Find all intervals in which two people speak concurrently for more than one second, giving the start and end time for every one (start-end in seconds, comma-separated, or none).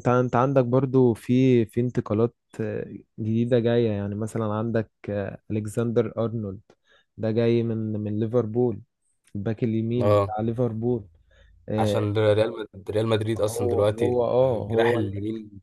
13.5-15.1